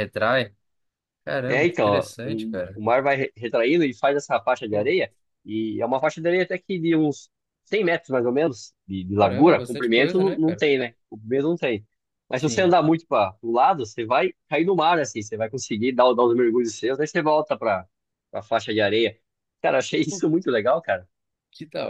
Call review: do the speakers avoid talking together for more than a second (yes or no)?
no